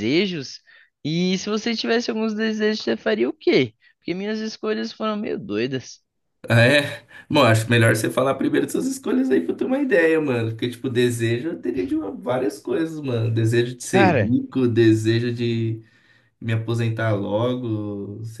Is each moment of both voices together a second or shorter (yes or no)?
yes